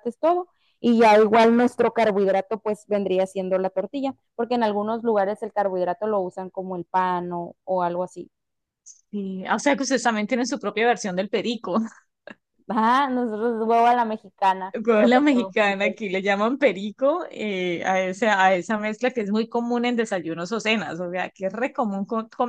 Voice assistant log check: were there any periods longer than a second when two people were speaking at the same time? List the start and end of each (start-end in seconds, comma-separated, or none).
14.7-16.0